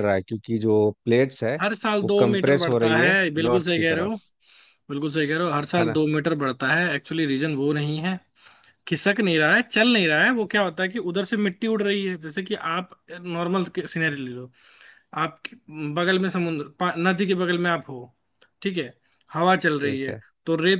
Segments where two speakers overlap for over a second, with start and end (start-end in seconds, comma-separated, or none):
2.0-4.1